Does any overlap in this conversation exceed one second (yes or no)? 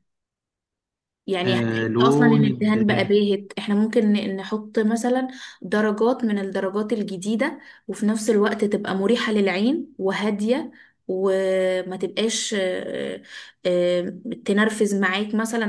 yes